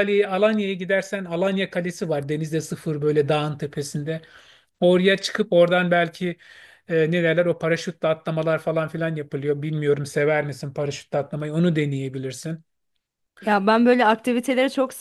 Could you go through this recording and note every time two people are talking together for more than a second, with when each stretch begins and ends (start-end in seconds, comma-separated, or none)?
none